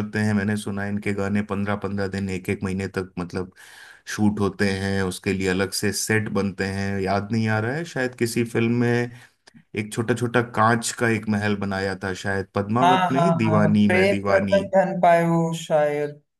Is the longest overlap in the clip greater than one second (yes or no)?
yes